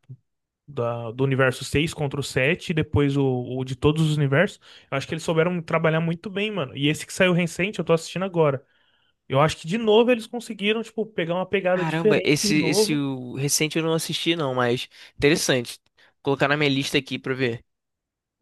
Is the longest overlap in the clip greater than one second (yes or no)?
yes